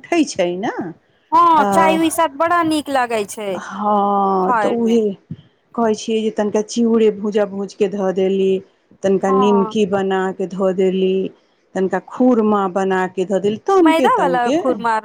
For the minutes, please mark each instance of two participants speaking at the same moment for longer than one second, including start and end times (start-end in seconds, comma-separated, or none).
none